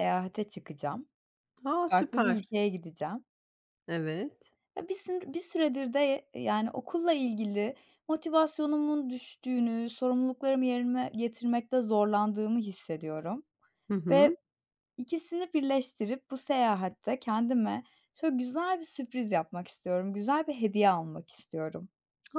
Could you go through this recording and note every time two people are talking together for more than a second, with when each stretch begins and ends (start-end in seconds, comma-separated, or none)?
none